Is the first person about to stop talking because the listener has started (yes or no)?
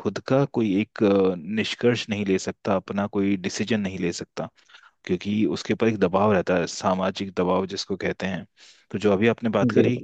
no